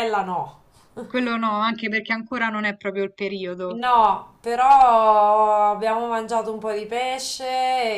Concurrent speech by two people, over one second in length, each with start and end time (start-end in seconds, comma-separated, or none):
none